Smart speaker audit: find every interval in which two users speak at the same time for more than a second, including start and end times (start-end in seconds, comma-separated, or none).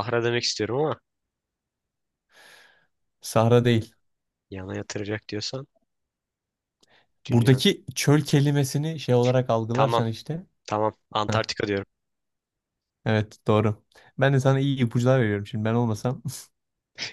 none